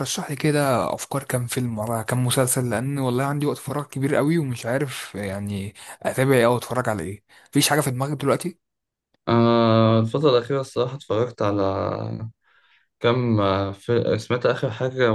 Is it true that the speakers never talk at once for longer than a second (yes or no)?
yes